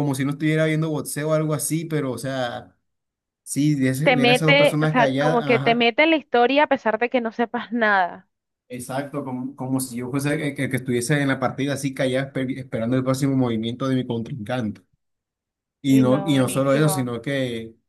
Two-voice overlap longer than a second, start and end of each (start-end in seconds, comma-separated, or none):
4.0-5.9, 15.9-17.1